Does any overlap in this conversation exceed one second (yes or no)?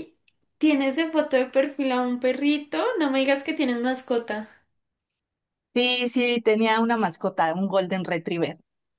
no